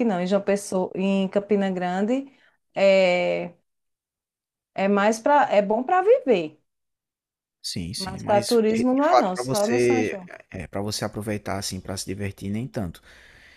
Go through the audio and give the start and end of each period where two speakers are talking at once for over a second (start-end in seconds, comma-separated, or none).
8.0-10.3